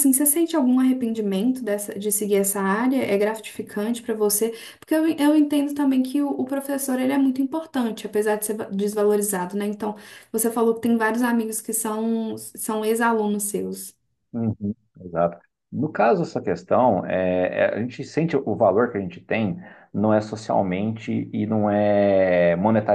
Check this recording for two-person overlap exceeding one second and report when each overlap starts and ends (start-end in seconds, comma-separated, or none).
none